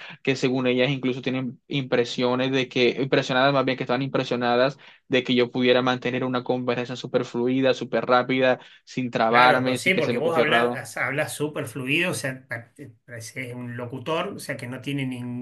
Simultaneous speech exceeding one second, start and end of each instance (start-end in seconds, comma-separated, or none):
9.3-10.8